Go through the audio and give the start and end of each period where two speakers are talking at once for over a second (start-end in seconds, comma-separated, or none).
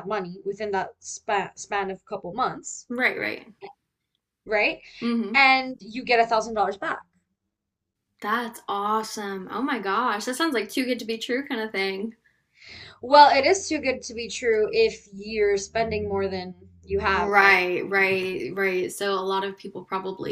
none